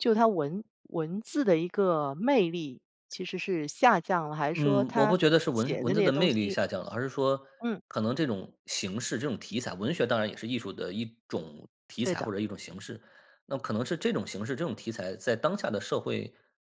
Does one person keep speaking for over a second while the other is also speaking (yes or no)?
yes